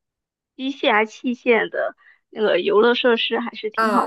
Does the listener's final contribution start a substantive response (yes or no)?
yes